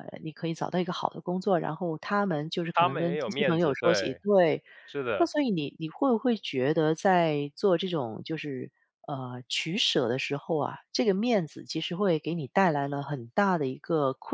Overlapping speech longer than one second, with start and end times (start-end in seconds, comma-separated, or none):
2.7-4.2